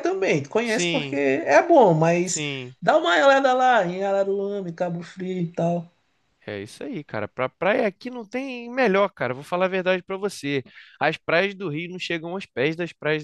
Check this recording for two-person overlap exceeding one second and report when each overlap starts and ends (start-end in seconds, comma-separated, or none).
none